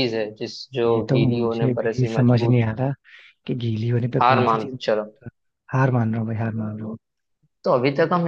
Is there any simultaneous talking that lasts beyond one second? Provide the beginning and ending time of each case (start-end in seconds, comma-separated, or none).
0.8-2.6